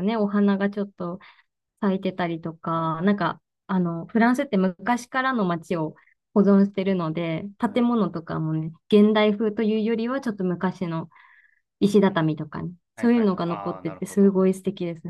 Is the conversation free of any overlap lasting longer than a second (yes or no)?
no